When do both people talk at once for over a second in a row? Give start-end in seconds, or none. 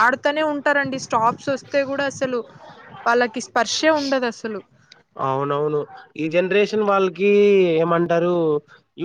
none